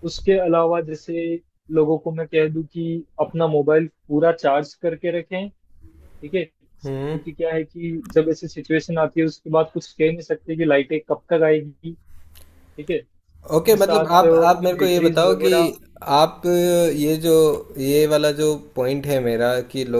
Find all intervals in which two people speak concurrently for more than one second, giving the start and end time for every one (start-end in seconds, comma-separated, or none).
13.6-15.5